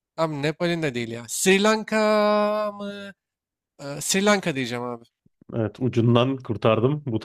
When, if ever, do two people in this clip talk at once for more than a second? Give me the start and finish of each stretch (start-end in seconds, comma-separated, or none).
none